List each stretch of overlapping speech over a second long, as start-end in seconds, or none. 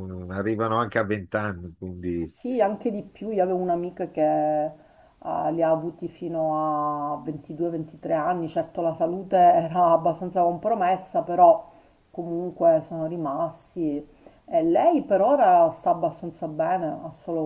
none